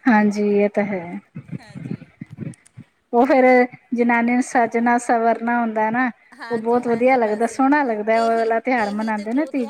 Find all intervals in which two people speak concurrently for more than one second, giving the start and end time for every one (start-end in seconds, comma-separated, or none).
6.5-8.5